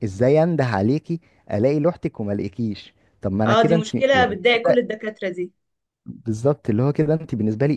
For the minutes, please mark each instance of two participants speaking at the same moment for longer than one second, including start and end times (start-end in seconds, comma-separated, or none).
3.5-4.9